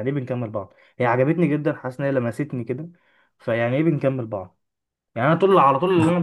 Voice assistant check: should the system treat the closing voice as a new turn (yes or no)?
no